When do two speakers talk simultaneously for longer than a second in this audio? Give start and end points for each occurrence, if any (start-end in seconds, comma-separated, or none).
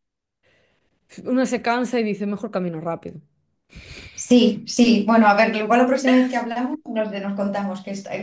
none